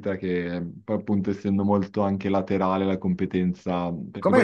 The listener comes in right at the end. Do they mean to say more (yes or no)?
yes